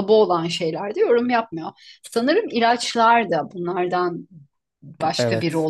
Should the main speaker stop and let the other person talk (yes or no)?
no